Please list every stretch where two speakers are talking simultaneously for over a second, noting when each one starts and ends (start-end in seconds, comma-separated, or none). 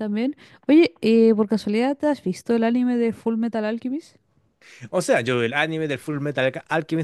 none